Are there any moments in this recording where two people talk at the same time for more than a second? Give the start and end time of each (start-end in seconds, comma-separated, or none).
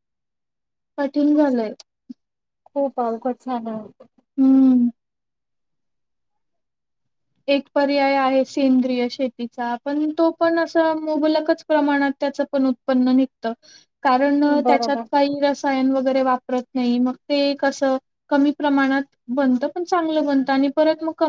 none